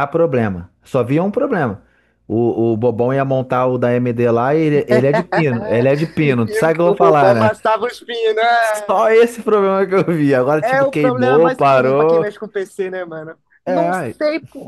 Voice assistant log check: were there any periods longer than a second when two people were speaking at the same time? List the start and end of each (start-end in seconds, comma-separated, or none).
6.2-7.5, 10.6-12.2